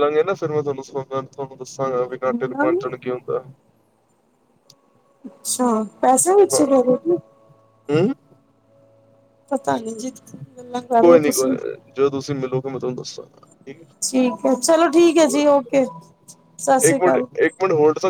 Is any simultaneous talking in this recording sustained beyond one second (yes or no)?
no